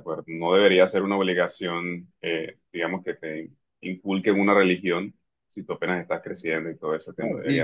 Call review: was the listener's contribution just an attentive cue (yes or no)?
no